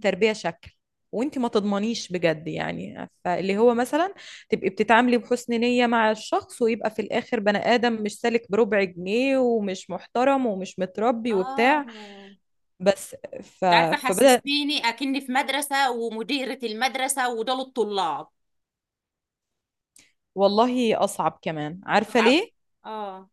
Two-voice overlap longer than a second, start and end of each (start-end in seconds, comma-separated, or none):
none